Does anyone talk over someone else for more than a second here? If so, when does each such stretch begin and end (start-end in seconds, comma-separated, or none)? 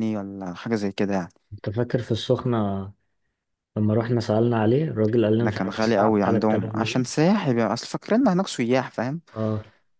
5.4-7.0